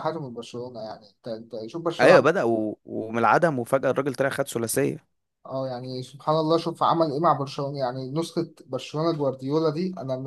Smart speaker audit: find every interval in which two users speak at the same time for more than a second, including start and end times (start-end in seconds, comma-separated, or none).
none